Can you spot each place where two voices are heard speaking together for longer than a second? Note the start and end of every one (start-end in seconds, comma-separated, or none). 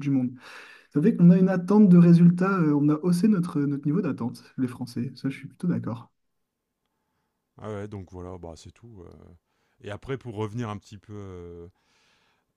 none